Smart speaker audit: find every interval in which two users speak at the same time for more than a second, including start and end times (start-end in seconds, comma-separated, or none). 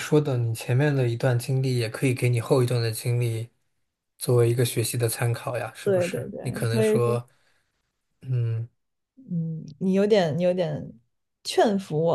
5.8-7.2